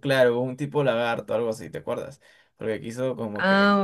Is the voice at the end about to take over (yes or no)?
yes